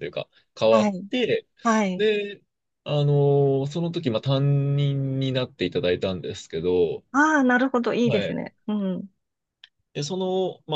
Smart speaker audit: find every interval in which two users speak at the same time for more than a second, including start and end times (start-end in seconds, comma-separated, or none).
none